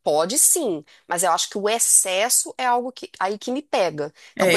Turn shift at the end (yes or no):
yes